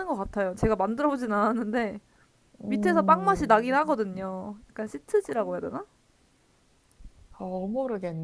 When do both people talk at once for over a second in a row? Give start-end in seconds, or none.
2.7-4.0